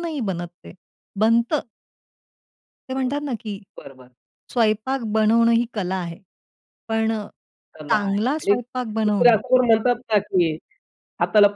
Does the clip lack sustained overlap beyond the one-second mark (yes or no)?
no